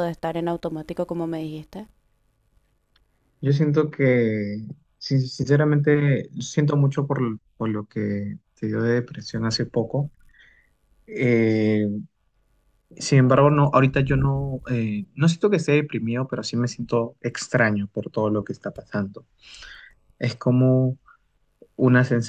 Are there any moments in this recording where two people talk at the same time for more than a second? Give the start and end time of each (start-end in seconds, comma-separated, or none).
none